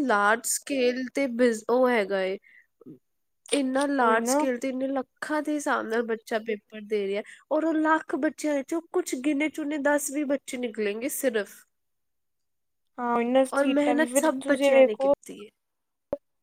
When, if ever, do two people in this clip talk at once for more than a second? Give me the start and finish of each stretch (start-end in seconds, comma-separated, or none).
13.6-15.1